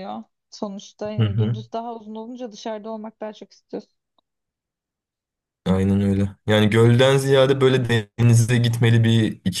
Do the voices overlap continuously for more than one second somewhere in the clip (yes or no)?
no